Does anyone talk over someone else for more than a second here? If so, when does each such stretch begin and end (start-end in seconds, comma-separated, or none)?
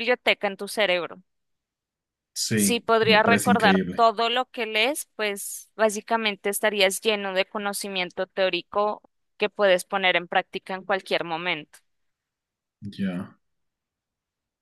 2.5-4.0